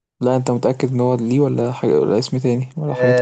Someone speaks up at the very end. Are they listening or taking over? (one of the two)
taking over